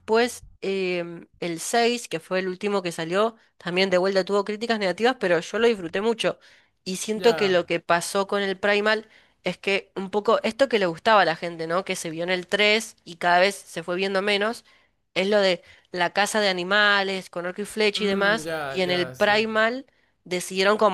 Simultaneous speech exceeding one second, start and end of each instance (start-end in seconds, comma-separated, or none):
18.0-19.4